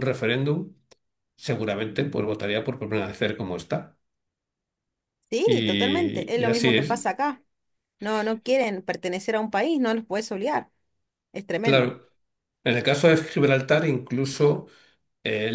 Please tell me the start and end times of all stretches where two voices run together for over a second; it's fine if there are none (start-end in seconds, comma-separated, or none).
5.4-6.9